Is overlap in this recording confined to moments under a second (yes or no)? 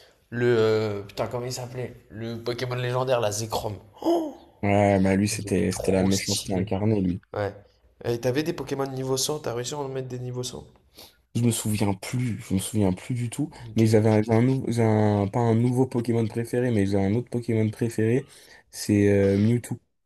no